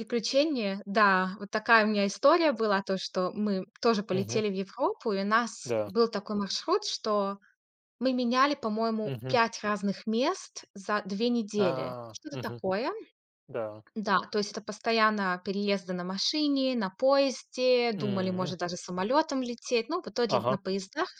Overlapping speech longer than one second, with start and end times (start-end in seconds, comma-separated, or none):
none